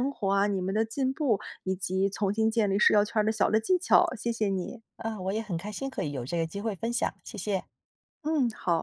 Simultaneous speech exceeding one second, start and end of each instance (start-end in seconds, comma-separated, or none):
none